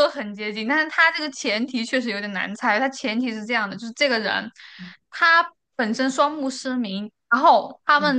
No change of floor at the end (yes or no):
yes